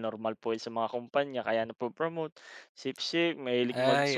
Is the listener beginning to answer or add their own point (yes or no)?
yes